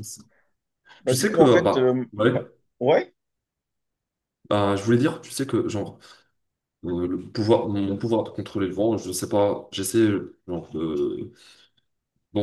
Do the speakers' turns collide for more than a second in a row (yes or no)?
yes